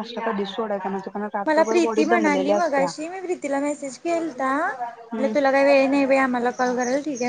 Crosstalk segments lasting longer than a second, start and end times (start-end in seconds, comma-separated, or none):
1.4-2.9